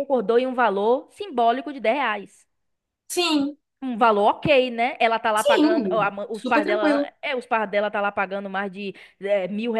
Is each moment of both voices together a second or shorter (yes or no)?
no